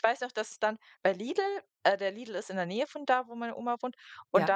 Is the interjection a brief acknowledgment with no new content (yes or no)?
yes